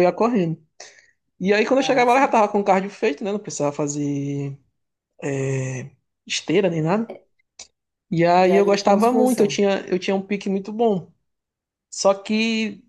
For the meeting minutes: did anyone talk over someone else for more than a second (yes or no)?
yes